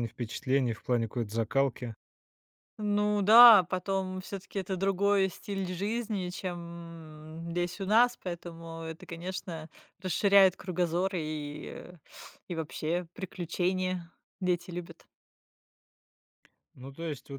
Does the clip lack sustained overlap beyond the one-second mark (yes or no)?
yes